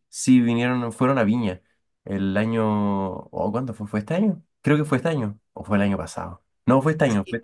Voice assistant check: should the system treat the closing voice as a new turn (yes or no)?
no